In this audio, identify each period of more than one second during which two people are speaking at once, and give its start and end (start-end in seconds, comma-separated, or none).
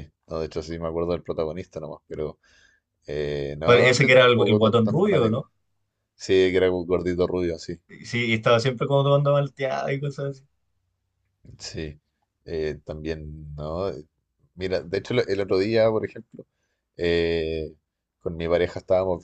3.6-5.5